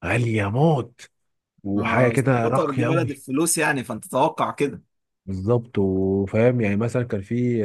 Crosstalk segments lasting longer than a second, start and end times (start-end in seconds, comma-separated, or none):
1.7-3.1